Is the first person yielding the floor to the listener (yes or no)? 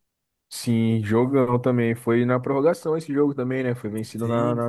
yes